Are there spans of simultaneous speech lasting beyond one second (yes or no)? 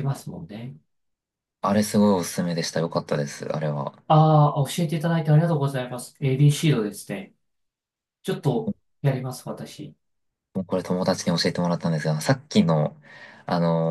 no